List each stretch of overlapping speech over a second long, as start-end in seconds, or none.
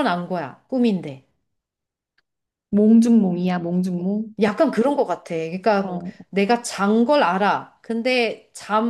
none